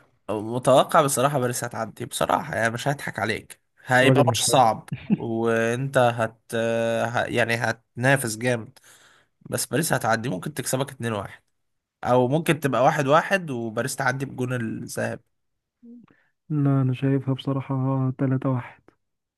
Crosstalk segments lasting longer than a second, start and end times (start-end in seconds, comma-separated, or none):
none